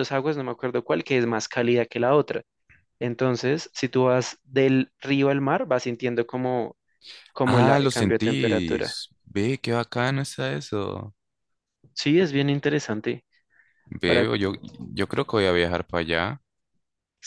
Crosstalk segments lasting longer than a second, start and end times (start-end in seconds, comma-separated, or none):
7.5-8.9